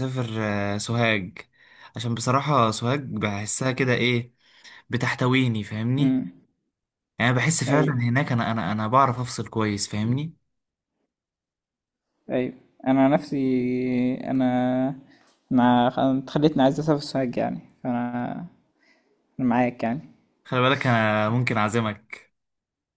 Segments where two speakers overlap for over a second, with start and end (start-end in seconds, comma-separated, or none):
none